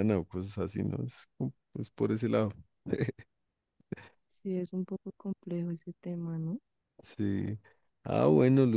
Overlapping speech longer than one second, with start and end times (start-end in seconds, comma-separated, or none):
none